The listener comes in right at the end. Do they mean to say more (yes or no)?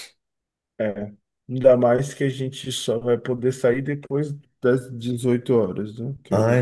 yes